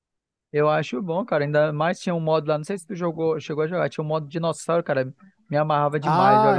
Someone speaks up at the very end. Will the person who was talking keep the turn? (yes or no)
no